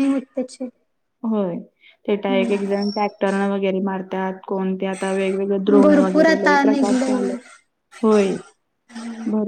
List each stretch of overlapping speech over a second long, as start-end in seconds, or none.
5.8-7.3